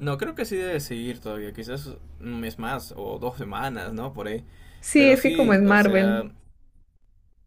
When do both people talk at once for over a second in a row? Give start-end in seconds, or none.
4.9-6.2